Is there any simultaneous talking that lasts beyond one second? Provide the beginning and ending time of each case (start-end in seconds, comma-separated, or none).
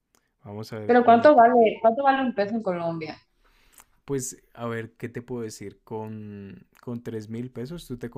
none